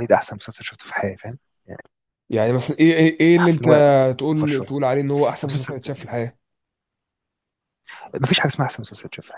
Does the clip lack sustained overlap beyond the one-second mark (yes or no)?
yes